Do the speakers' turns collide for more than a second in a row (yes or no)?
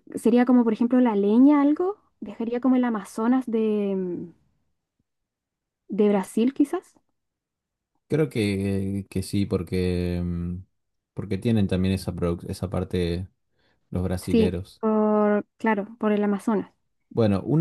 no